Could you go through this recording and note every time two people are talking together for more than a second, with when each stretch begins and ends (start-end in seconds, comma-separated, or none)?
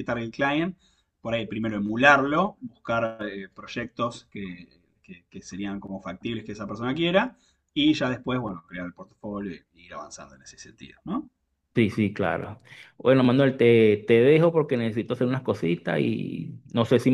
none